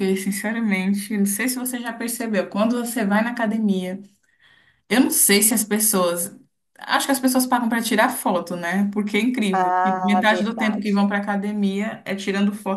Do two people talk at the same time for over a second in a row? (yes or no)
yes